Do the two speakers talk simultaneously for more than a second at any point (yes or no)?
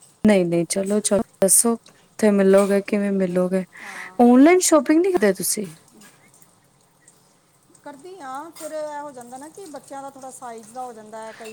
no